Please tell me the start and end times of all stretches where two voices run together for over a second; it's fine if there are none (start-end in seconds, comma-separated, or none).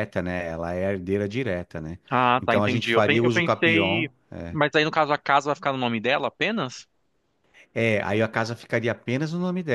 2.4-4.1